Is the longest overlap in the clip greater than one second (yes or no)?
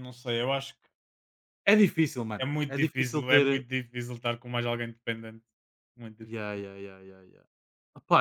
yes